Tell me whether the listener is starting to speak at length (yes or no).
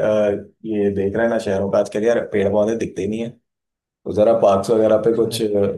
no